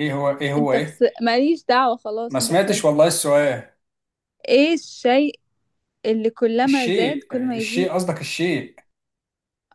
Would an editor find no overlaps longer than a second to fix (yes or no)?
no